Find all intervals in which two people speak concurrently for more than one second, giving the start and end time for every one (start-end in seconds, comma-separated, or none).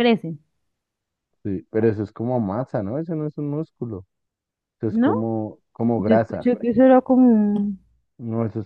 none